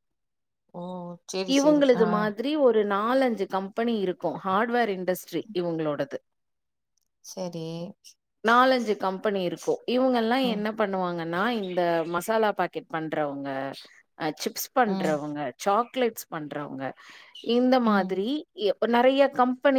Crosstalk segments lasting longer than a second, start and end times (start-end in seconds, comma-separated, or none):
none